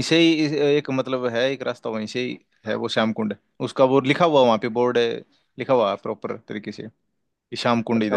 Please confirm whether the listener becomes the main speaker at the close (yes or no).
yes